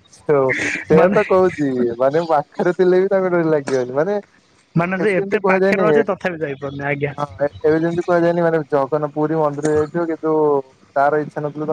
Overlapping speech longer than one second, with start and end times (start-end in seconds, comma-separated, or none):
4.8-7.1